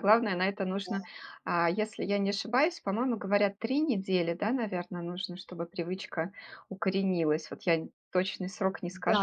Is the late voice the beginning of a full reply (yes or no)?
yes